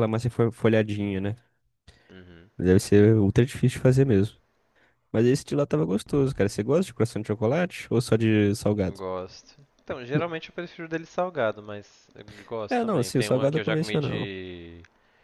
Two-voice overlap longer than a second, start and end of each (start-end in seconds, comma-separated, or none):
12.7-14.3